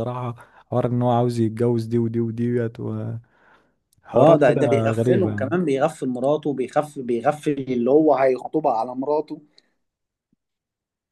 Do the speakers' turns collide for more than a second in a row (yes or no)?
yes